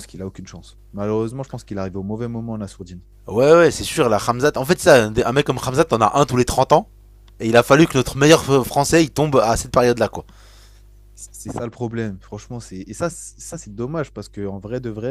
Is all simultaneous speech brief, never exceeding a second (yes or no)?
yes